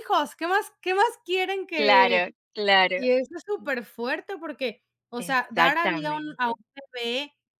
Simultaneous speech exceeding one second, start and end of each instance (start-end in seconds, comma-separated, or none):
5.3-6.5